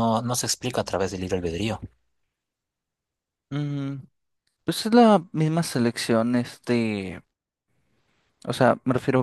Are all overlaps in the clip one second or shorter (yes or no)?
yes